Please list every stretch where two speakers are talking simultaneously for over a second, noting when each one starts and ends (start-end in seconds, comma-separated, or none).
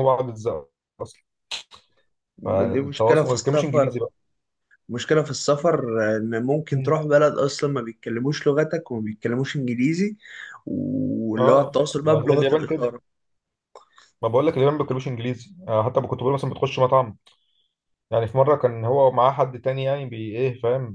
2.5-4.0, 11.4-12.9